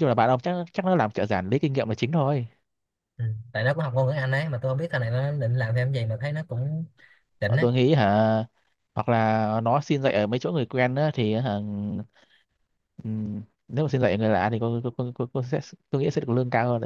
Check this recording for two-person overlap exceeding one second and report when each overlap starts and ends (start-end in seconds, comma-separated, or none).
none